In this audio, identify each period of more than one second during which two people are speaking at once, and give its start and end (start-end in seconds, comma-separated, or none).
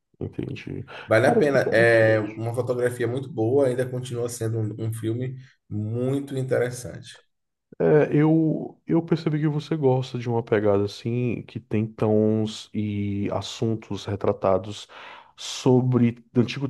1.1-2.5